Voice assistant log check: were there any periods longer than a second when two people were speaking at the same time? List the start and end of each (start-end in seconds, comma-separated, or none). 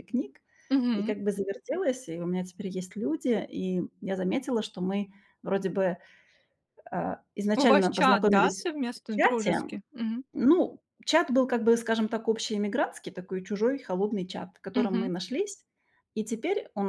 7.6-9.6